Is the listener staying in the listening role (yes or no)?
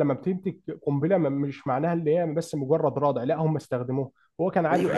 no